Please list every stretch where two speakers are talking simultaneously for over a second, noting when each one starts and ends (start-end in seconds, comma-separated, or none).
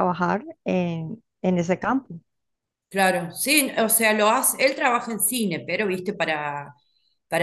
none